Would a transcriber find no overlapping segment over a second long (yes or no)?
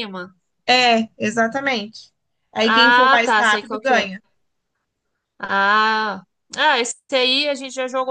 no